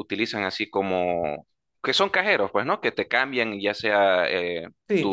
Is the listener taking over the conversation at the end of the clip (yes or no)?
yes